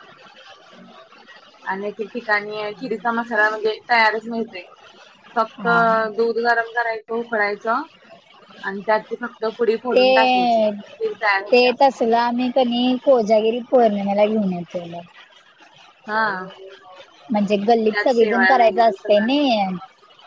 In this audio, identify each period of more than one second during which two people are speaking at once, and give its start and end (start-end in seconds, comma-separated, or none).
17.9-19.5